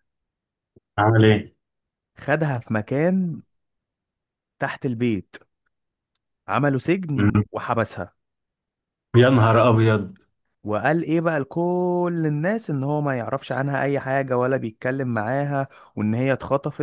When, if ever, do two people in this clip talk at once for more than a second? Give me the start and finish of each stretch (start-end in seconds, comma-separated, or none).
none